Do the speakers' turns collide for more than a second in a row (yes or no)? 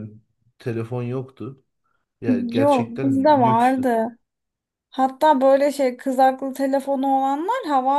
yes